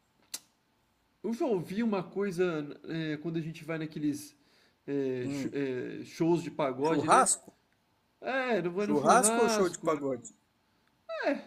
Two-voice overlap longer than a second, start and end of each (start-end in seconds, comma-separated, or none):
8.8-10.0